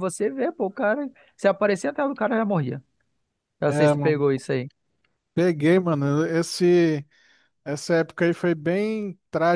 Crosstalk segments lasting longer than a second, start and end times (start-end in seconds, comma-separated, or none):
none